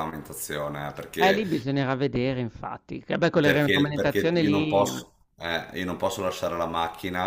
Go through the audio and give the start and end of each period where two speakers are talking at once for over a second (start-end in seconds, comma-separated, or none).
3.4-4.9